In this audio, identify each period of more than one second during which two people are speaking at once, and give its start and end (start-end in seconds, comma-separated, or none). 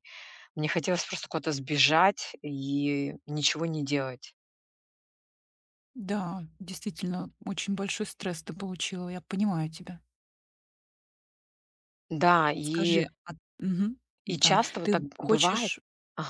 14.2-15.7